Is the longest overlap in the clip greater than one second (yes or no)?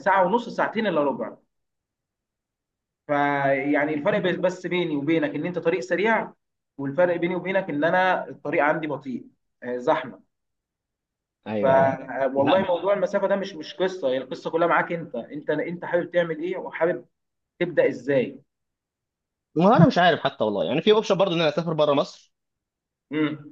no